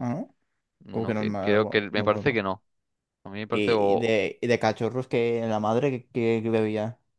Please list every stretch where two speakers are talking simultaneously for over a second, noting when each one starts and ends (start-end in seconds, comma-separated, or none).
0.9-2.4